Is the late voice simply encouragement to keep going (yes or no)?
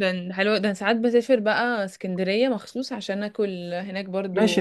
no